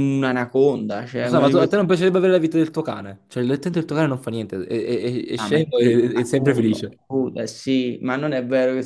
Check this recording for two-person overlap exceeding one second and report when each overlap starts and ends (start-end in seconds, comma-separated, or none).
5.3-7.0